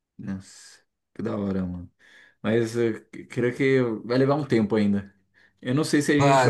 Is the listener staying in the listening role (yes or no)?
no